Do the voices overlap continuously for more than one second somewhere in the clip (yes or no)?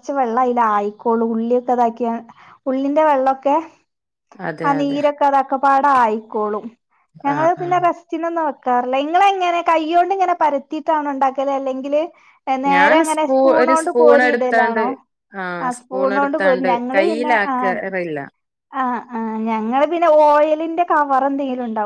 yes